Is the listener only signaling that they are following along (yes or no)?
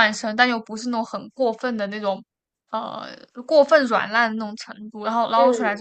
yes